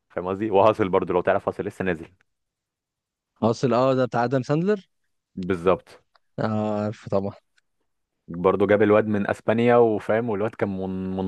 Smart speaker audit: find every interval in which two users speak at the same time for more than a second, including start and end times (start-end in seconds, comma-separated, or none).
none